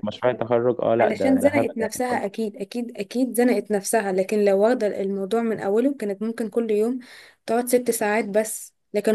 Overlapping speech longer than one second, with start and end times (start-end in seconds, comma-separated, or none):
1.0-2.4